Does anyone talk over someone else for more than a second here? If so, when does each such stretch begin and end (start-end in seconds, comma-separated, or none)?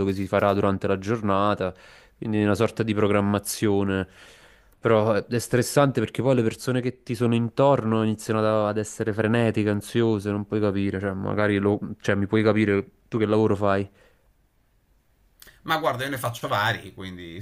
none